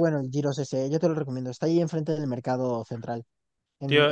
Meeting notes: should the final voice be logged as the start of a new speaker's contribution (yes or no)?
yes